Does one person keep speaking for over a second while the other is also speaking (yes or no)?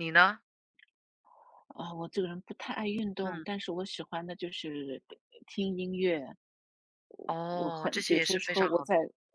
yes